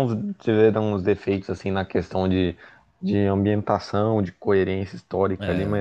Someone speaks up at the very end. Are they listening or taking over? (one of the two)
listening